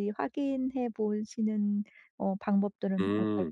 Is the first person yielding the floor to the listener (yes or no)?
yes